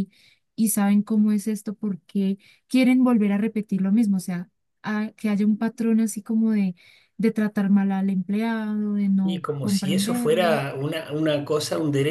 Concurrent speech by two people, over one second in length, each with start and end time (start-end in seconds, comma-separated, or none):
9.2-10.6